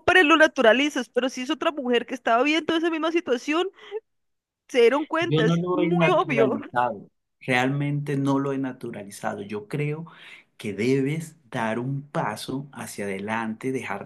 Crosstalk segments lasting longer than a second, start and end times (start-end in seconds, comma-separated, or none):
5.2-6.6